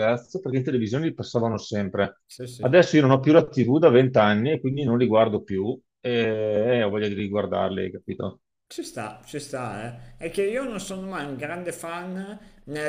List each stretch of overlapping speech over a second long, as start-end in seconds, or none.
none